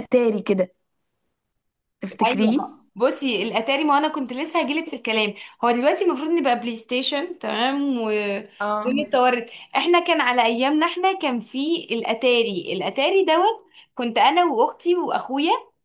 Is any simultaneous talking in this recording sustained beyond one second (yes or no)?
no